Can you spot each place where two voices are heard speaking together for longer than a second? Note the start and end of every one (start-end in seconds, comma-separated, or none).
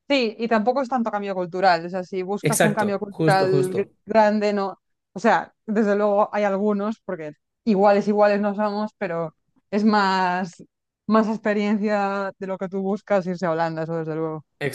2.4-3.9